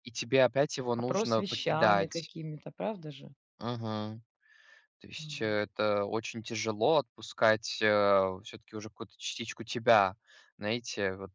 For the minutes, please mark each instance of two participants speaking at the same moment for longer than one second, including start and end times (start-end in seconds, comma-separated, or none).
1.0-2.3